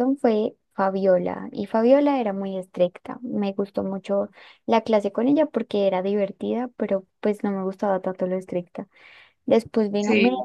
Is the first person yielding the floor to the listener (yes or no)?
no